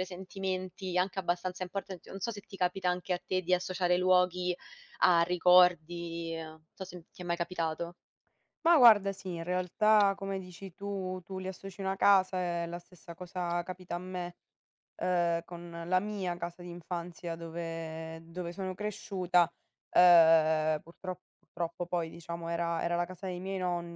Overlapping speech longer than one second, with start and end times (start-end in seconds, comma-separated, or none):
none